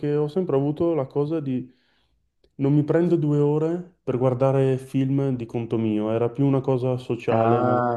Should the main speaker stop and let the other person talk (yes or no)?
yes